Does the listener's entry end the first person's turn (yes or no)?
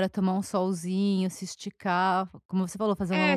yes